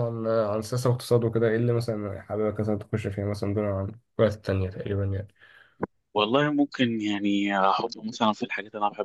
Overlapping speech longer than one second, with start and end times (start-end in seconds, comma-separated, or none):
none